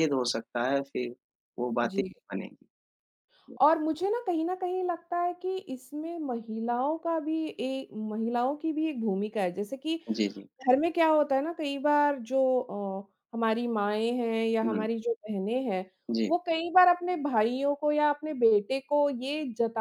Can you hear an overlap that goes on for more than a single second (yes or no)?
no